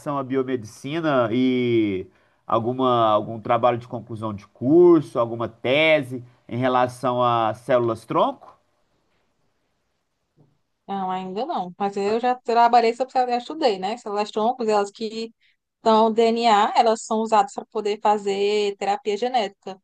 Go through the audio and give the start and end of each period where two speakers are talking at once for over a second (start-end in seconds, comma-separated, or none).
none